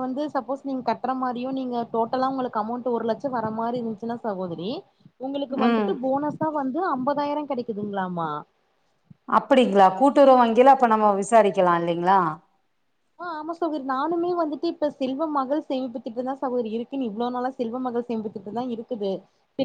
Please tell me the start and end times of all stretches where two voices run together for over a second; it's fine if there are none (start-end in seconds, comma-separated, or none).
none